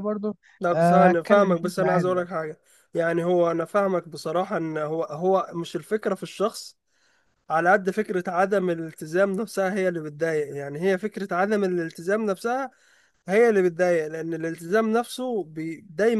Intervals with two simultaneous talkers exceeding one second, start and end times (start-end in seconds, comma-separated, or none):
0.7-2.3